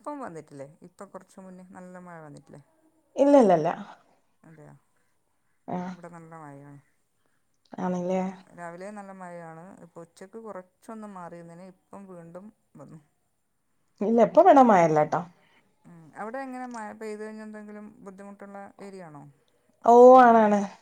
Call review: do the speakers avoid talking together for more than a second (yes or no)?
yes